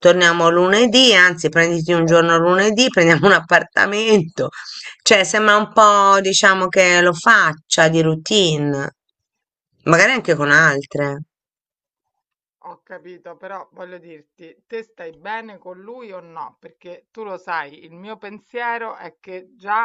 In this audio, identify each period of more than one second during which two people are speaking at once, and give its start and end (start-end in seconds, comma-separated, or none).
none